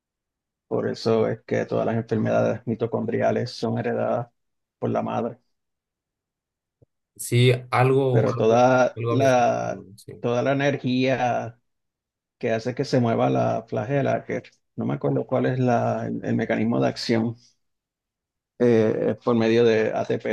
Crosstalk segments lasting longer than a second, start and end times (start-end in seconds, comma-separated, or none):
8.1-10.1